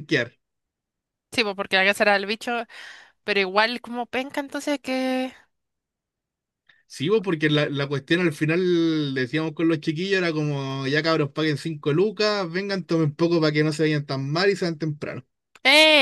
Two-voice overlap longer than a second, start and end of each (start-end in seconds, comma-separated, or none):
none